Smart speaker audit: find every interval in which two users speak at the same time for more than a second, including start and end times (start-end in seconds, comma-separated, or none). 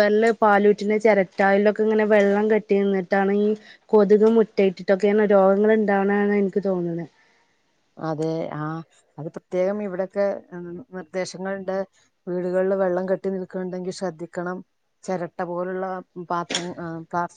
none